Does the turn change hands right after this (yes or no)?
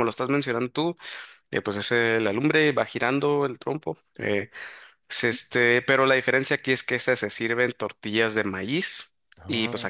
no